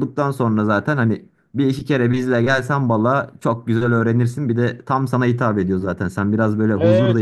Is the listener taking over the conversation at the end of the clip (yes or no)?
yes